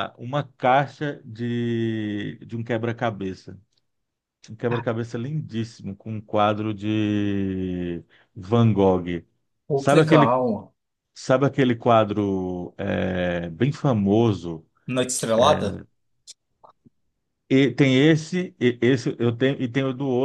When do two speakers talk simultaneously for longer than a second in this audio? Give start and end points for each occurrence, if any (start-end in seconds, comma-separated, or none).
none